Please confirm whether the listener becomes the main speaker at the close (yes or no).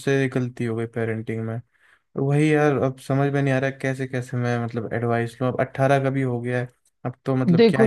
yes